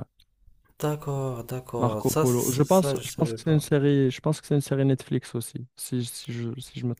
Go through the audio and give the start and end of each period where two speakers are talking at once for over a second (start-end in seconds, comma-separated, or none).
1.8-3.6